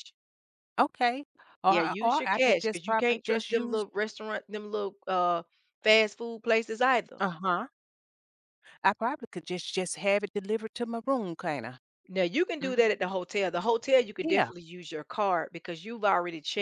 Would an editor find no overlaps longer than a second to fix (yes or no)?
no